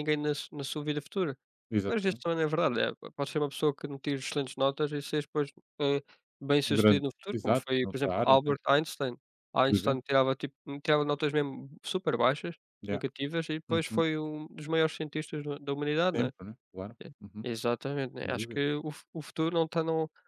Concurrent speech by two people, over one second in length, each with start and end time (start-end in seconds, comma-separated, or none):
6.7-8.5